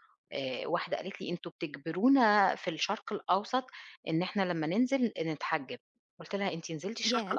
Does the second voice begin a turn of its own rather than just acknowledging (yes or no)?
no